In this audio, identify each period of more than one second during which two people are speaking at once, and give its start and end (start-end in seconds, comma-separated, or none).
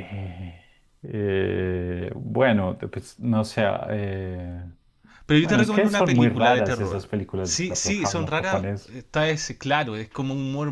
5.4-9.0